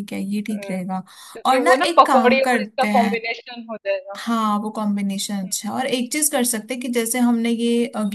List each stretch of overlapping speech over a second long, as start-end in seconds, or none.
1.5-3.1